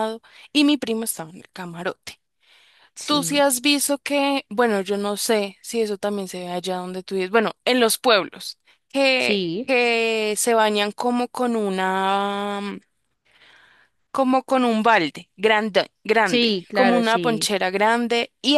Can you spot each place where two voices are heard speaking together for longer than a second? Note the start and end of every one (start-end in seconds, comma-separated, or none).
16.2-17.5